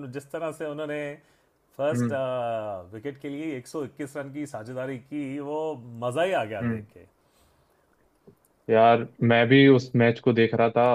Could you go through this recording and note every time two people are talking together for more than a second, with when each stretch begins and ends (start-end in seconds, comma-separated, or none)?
none